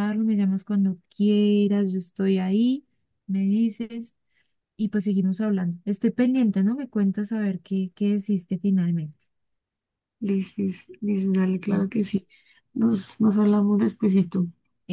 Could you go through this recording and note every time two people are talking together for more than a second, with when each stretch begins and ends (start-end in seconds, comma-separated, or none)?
none